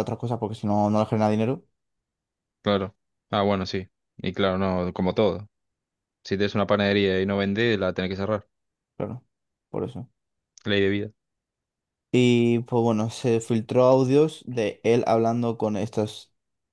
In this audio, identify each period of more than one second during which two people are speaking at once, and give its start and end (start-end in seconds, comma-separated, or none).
none